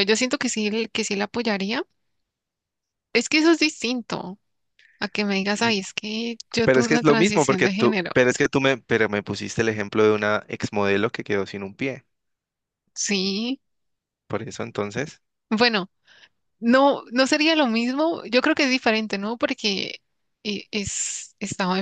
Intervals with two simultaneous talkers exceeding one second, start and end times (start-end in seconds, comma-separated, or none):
6.6-8.2